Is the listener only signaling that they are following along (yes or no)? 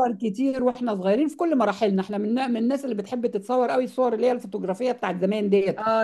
no